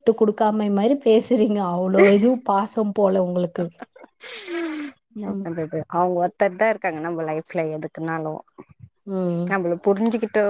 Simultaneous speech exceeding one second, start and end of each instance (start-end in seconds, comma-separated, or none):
none